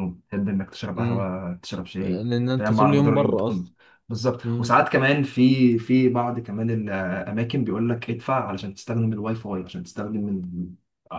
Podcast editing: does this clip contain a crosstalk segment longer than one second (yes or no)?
yes